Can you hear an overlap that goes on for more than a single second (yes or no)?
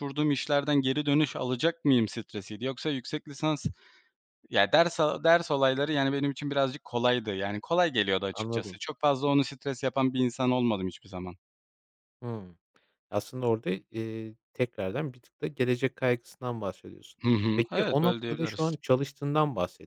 yes